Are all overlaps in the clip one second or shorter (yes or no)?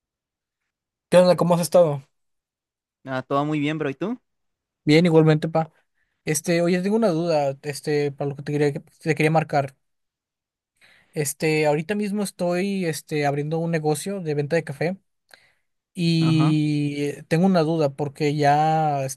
yes